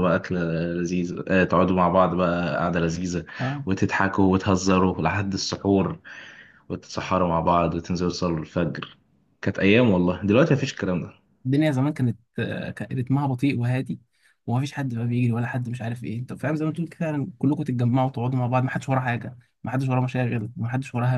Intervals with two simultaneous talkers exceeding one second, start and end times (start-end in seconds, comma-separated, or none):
none